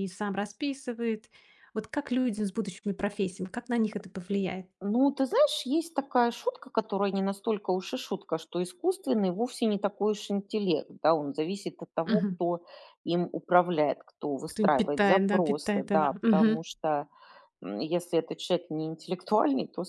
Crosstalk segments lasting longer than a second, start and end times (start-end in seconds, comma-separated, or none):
14.5-16.6